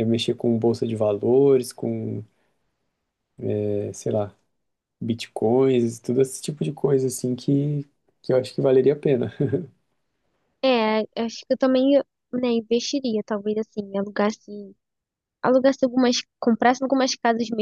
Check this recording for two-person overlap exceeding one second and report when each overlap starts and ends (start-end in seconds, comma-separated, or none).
none